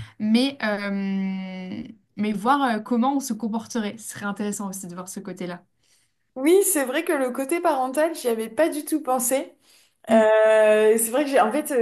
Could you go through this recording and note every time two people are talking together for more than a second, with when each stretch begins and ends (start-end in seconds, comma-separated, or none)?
none